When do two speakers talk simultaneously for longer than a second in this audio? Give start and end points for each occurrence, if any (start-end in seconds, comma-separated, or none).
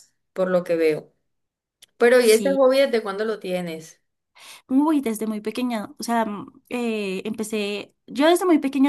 none